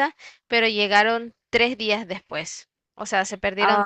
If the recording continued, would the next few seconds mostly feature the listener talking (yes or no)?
yes